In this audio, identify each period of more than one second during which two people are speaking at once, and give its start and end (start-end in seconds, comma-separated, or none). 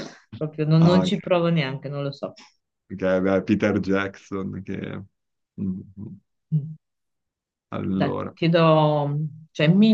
none